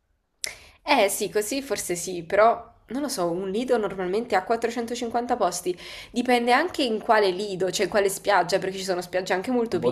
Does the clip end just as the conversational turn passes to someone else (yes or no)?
yes